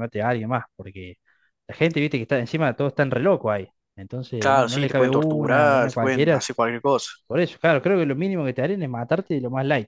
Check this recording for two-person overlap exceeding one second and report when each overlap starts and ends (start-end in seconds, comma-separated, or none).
4.4-6.4